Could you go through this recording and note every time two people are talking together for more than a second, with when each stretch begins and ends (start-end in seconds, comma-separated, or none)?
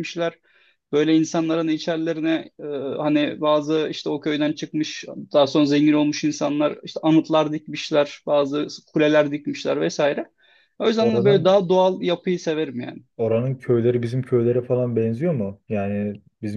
none